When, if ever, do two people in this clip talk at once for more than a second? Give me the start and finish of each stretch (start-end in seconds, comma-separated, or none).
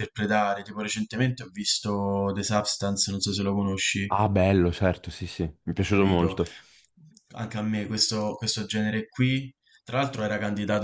none